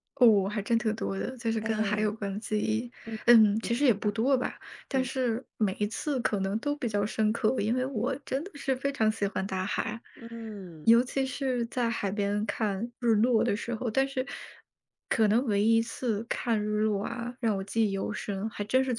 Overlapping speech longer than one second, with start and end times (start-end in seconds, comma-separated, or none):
none